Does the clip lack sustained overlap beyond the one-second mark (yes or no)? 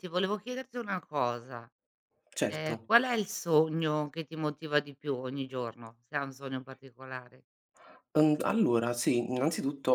yes